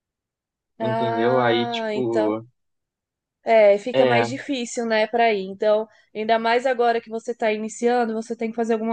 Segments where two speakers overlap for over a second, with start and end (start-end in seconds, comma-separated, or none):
0.8-2.4